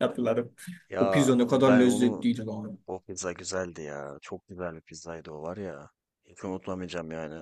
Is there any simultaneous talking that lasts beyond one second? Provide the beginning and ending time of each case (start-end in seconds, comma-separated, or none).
1.0-2.3